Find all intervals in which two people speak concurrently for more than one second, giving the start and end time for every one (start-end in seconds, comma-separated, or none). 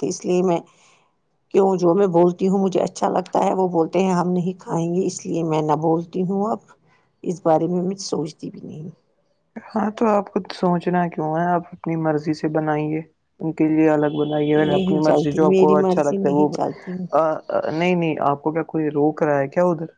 14.6-16.4